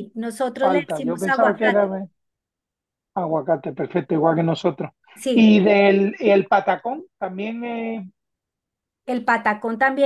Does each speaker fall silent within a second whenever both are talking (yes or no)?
no